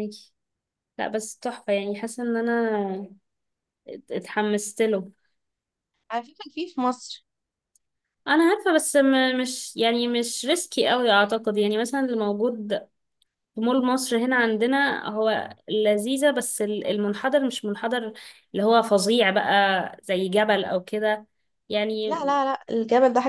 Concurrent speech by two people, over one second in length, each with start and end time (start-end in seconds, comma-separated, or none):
none